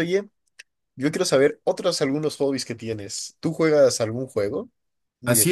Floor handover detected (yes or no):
yes